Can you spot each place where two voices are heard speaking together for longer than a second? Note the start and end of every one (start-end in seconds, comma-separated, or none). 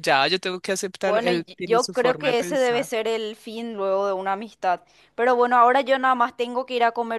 1.0-2.9